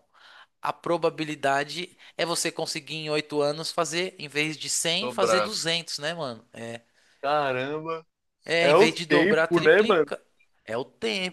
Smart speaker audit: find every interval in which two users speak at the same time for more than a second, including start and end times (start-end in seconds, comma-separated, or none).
8.6-10.1